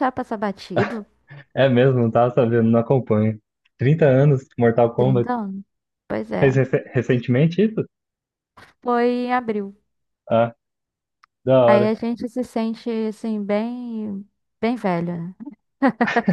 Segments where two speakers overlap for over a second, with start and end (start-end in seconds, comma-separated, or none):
none